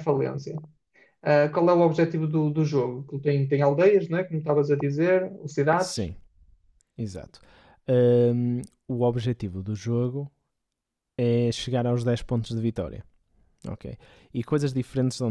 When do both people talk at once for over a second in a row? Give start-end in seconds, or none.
none